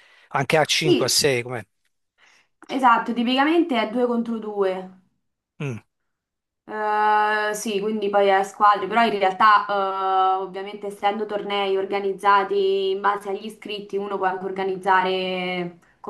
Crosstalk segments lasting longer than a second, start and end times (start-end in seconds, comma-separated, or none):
none